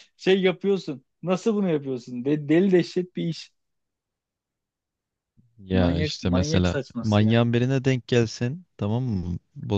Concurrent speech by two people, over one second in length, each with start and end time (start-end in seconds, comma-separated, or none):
5.7-7.5